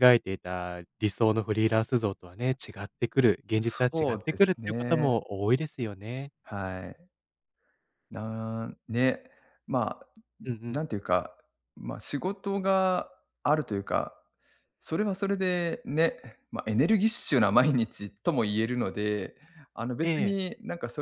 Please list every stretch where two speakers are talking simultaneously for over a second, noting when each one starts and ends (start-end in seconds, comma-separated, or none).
3.6-5.2